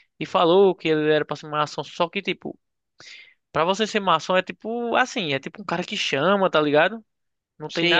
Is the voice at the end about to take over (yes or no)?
yes